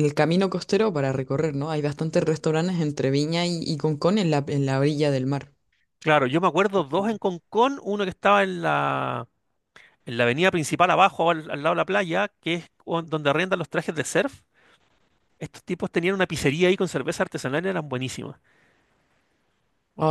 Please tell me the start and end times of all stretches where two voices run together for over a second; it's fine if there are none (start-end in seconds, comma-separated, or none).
none